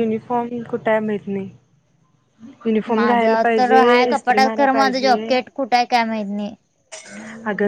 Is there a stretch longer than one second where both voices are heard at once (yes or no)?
yes